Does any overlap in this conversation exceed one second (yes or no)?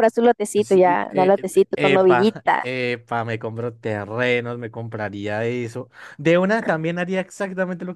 yes